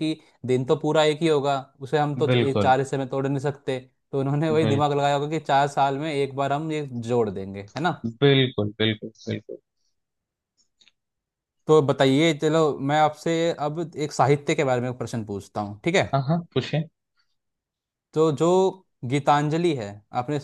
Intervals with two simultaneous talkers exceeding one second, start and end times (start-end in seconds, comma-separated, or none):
none